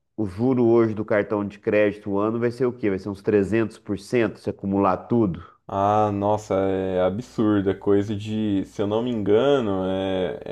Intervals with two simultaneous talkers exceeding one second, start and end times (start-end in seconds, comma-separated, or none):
none